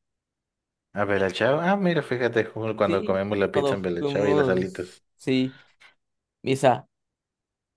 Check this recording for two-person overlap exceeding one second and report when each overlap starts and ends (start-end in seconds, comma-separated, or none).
2.8-5.0